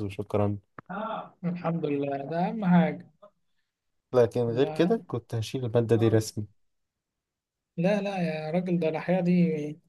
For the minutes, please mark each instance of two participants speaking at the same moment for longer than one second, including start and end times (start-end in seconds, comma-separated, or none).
none